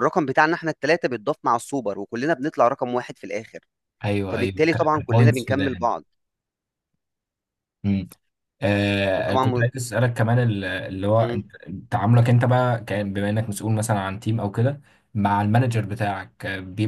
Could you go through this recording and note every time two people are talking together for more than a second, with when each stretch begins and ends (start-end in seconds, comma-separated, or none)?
4.3-5.9